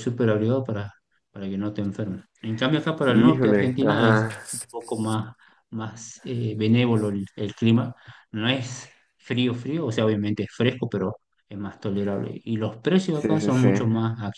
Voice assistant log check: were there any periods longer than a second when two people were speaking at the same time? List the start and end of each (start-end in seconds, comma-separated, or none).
3.1-4.3